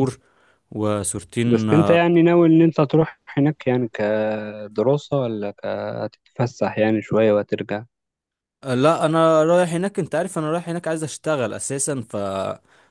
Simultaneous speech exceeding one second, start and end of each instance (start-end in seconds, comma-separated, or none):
none